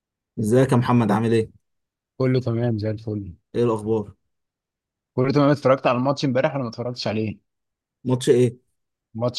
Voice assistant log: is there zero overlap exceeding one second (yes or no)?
yes